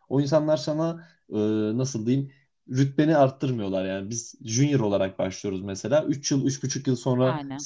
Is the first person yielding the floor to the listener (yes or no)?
no